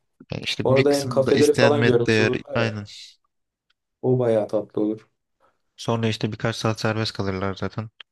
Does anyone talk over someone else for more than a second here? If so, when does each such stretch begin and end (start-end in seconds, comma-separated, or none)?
0.6-2.8